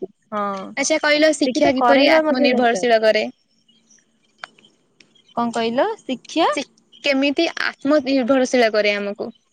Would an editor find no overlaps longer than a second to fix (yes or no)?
no